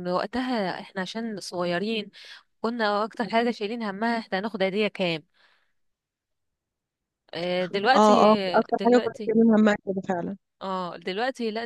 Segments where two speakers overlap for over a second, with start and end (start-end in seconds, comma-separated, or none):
none